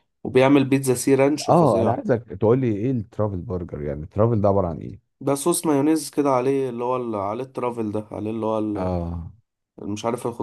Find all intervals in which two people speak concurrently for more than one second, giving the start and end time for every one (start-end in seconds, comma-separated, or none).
none